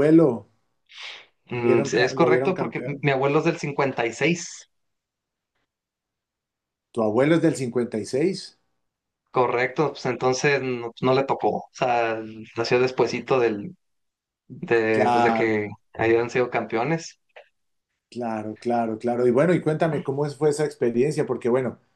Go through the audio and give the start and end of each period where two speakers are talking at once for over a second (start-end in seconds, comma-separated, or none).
1.6-3.1